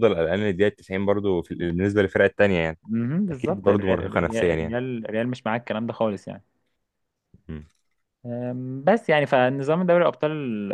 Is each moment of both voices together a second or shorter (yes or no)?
no